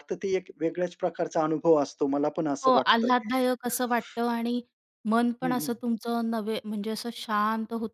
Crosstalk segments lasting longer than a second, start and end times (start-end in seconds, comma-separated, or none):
none